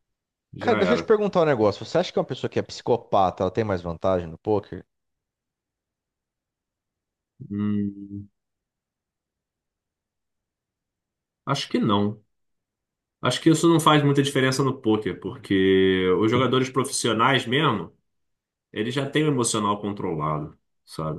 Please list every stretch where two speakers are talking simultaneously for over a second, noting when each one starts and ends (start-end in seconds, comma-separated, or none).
none